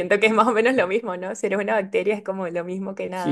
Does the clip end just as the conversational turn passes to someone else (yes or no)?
yes